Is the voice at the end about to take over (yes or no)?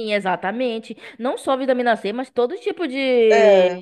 no